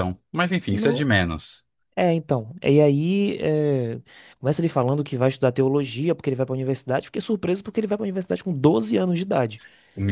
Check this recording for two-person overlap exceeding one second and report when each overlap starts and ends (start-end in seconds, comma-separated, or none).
none